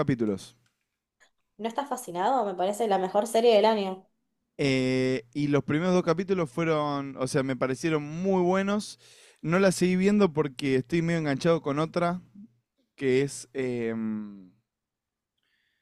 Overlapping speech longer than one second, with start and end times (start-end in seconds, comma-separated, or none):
none